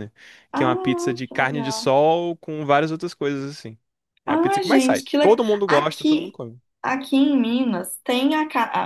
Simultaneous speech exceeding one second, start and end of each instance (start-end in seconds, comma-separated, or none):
0.5-1.9, 4.2-6.4